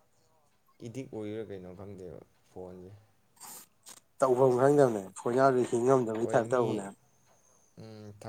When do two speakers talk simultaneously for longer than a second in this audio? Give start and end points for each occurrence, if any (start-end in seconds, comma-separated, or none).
none